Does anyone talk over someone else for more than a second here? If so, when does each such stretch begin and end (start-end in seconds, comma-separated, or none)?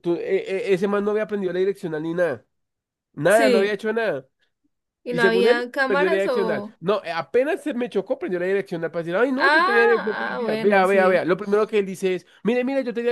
5.1-6.8, 9.4-11.2